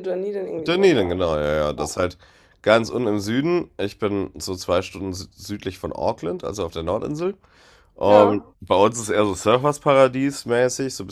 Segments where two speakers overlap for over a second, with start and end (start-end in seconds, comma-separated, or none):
none